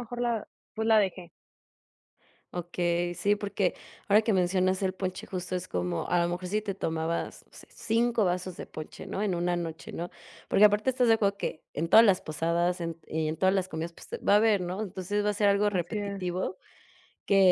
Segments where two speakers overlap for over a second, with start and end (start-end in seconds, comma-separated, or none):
none